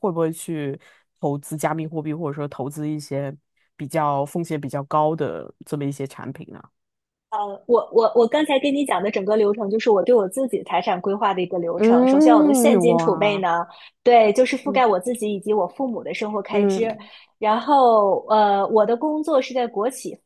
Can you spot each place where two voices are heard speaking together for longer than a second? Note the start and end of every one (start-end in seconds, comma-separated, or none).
11.8-13.4